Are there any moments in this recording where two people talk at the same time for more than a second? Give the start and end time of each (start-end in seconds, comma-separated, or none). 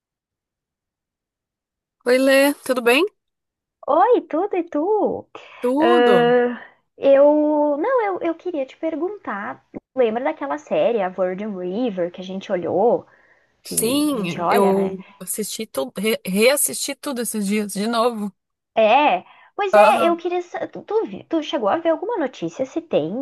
13.6-14.9